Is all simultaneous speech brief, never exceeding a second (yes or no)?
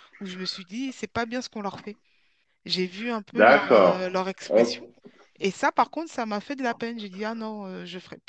no